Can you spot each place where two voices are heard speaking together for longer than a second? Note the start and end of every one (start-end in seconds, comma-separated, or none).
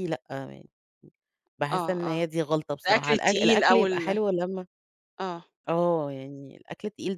2.9-4.2